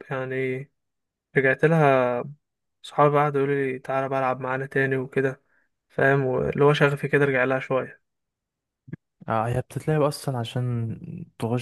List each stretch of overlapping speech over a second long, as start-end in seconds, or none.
none